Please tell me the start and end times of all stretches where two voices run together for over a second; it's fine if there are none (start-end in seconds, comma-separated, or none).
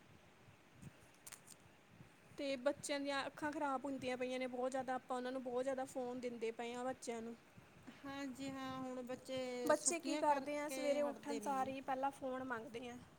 10.0-11.7